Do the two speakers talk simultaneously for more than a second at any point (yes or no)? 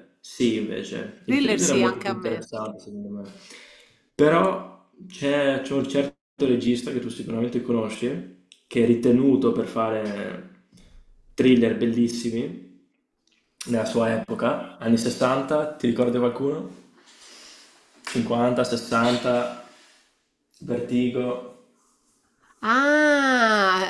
yes